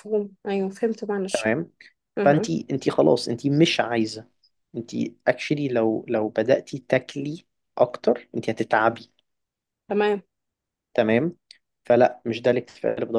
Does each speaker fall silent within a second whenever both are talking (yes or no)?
yes